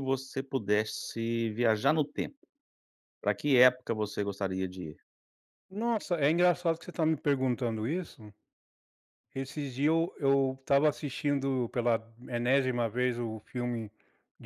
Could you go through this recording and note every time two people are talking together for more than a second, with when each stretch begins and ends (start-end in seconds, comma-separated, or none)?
none